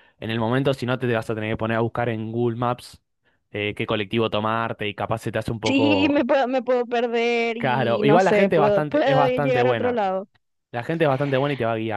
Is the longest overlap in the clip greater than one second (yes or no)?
yes